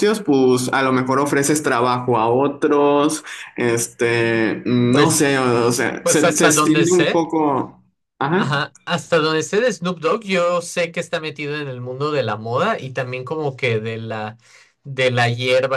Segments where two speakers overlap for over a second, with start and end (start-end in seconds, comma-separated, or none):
6.0-7.2